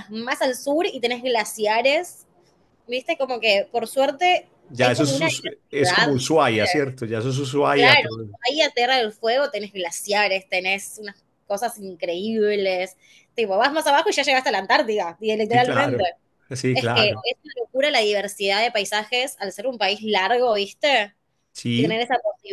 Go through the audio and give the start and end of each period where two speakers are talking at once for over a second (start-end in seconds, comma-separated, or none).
4.7-6.2